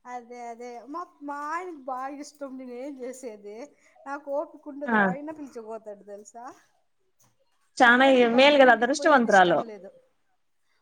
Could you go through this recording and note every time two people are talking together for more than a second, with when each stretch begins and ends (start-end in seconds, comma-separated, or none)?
7.8-9.6